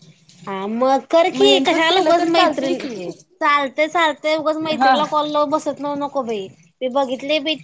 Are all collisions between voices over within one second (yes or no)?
no